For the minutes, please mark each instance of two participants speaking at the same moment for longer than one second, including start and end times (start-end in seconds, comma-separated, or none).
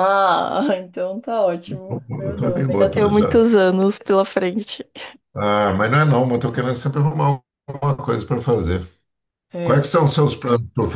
1.9-3.4